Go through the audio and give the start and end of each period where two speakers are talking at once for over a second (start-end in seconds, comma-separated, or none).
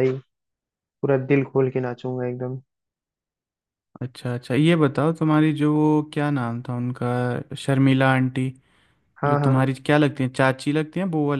none